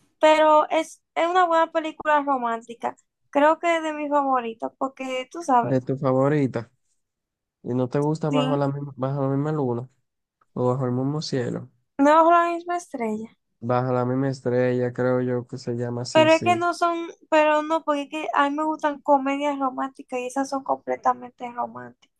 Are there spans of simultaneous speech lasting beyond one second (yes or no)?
no